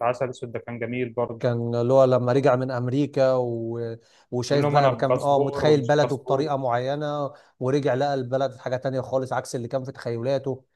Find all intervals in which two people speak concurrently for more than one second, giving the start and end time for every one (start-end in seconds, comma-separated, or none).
4.5-6.5